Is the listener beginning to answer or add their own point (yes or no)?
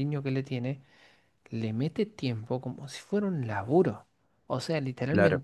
no